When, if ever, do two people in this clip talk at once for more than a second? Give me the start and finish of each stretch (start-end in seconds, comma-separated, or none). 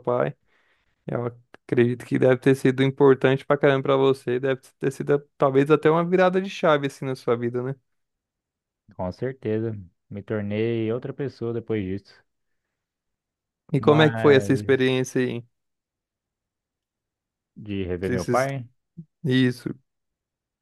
13.8-15.0